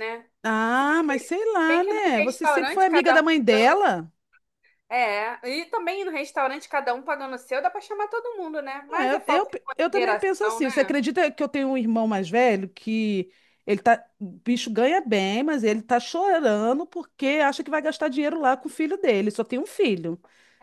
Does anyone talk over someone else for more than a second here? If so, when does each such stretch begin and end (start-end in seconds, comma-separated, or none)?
1.7-3.8, 8.9-11.0